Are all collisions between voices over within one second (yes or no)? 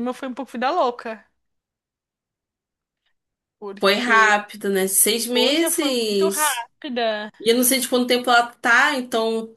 no